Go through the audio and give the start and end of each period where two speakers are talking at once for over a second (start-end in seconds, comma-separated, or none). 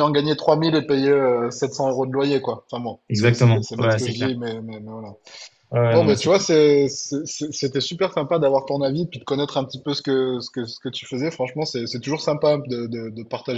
3.1-4.3